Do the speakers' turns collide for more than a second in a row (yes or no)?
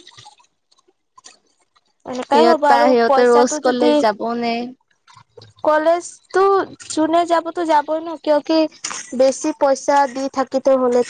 yes